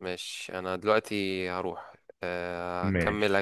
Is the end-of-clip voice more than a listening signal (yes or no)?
no